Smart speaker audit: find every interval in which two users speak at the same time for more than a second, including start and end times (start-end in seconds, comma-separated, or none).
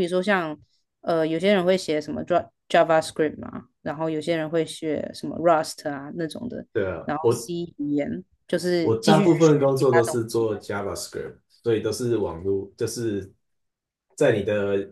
8.8-10.5